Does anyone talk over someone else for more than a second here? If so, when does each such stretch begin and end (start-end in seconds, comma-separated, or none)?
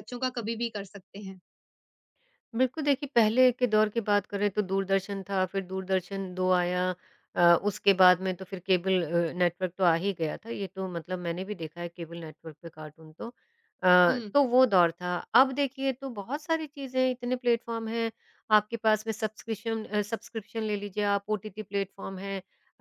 none